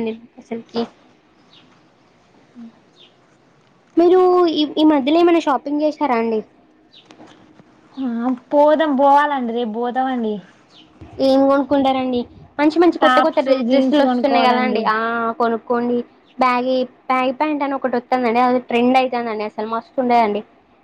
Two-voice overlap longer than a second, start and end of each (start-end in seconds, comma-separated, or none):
13.0-14.8